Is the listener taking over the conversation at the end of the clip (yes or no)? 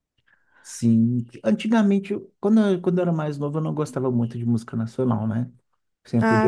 no